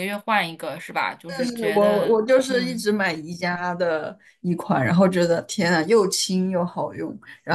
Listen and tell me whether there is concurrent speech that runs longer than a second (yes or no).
yes